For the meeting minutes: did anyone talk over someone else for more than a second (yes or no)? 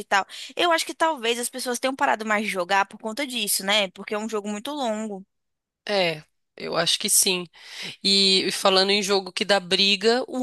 no